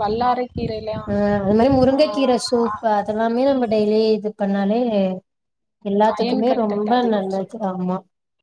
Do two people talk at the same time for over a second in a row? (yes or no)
yes